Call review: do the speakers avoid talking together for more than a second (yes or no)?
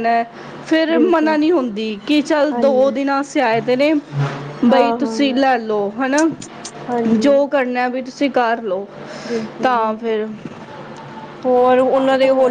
yes